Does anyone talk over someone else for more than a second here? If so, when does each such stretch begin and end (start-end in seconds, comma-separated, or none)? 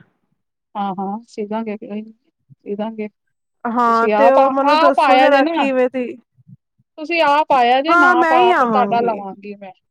3.8-5.6, 7.9-9.1